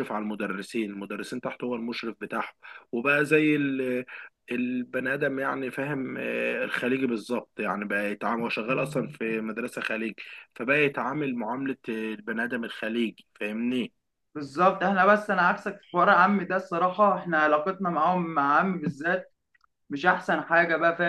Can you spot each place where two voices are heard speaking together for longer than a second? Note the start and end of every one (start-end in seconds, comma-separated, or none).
none